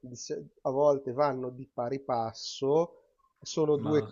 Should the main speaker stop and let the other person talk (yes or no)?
no